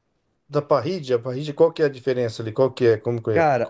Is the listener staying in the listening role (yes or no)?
no